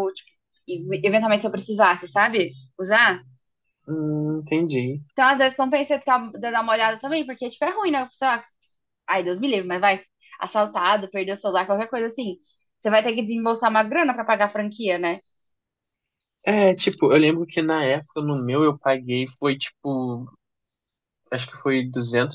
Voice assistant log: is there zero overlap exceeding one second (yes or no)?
yes